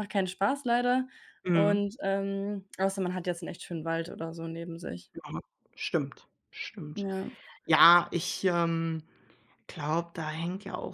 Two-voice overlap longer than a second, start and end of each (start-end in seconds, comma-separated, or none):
none